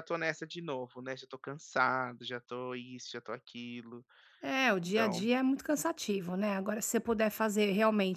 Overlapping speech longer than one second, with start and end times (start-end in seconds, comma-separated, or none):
none